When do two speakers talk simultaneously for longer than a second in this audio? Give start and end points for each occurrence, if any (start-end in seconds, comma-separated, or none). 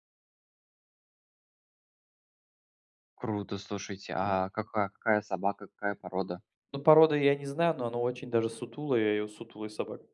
none